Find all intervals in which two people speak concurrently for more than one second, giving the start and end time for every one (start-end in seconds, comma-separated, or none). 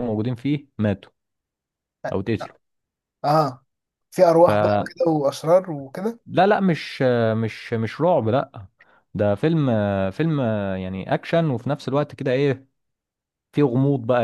none